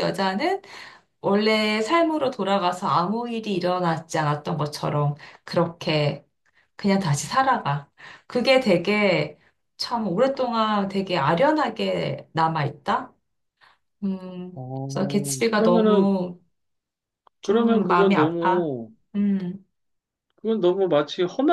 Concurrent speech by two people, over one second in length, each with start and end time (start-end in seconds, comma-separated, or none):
14.9-16.1, 17.4-18.7